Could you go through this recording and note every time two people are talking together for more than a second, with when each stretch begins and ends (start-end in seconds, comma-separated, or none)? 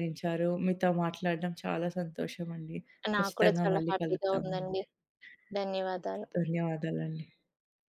3.2-4.8